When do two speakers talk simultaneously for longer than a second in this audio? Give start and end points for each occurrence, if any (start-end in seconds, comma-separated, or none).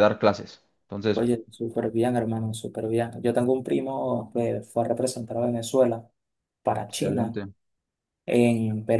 none